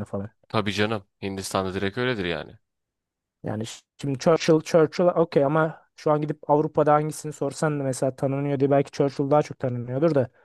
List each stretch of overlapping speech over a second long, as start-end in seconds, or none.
none